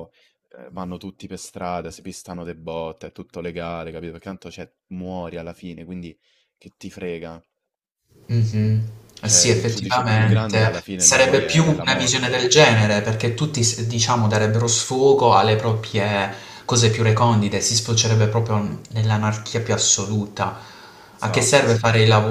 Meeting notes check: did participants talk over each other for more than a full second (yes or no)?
yes